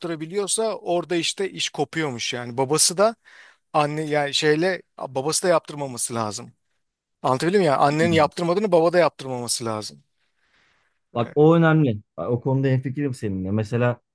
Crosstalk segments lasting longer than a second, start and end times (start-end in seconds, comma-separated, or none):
none